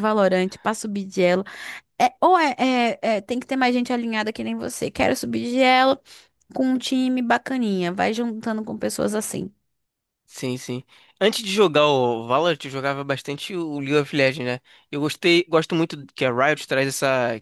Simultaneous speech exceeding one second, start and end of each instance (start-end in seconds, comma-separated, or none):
none